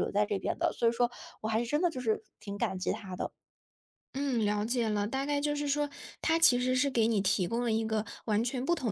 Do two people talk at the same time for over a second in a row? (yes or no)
no